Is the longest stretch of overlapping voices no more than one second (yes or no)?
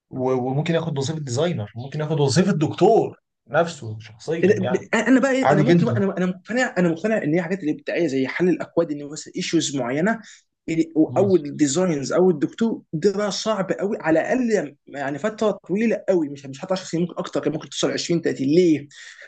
yes